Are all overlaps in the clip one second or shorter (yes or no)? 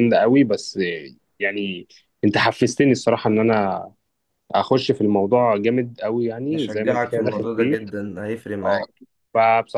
no